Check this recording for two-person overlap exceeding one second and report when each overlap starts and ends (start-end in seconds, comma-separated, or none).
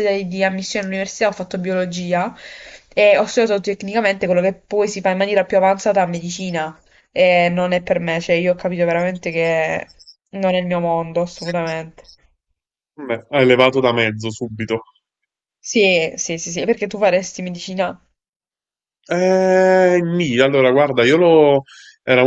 none